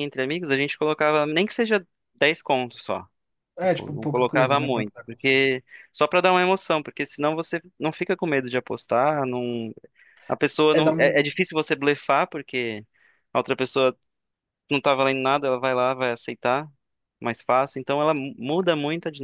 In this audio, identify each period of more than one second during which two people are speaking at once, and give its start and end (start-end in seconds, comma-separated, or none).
3.6-5.4